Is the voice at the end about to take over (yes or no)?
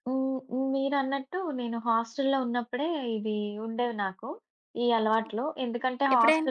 no